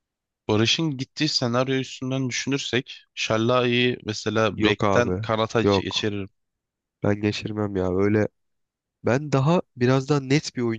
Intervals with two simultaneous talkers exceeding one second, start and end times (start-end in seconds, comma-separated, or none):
4.6-6.1